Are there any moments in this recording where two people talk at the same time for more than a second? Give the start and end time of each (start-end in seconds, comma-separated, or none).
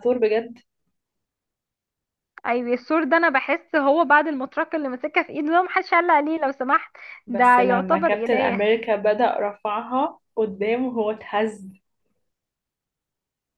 7.3-8.6